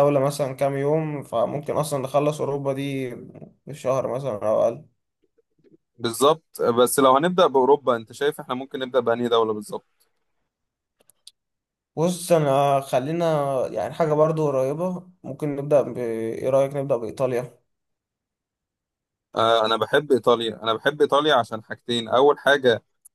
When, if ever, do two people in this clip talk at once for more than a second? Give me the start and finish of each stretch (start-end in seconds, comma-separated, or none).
none